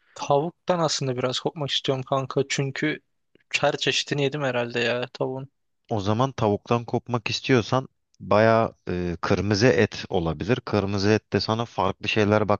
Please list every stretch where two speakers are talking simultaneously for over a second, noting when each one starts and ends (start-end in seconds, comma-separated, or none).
none